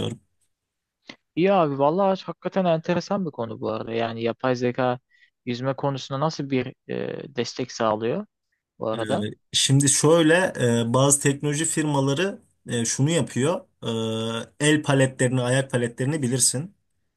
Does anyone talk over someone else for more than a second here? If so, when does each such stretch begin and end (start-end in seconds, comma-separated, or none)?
none